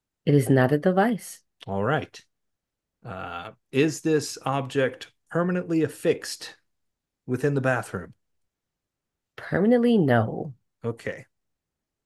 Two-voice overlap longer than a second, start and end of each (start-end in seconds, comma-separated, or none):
none